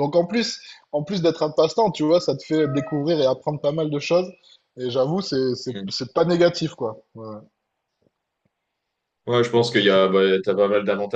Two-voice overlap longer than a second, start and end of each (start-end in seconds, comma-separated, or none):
none